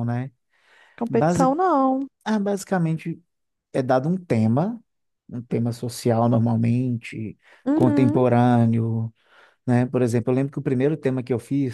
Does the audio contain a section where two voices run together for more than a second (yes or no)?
no